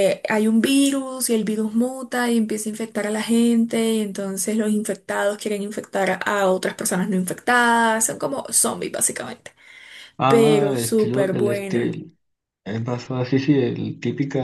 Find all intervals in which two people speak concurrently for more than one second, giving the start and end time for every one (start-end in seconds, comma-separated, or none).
10.3-11.9